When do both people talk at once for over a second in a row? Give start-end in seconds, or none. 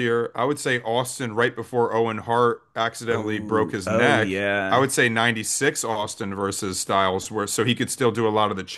3.1-4.9